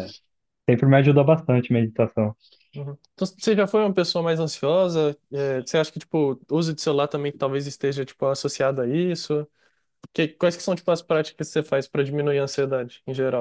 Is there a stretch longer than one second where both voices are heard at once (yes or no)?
no